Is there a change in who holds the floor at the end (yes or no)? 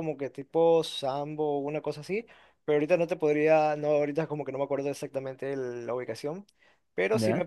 no